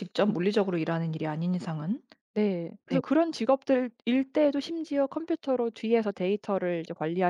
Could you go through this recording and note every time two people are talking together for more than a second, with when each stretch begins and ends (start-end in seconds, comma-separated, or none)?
none